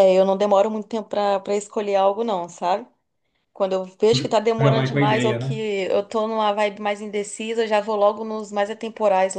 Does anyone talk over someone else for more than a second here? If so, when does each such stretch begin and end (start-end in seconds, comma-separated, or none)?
4.1-5.5